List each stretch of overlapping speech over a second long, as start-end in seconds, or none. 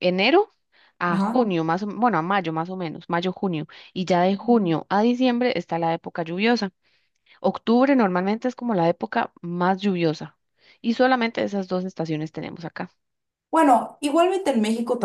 none